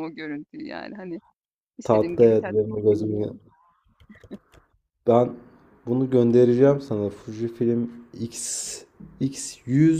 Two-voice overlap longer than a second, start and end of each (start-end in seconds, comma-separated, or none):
1.8-3.3